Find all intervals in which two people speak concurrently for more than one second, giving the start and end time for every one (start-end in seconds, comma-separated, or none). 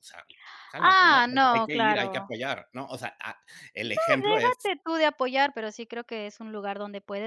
0.8-2.3